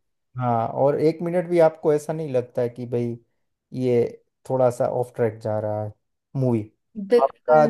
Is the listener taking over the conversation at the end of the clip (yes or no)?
yes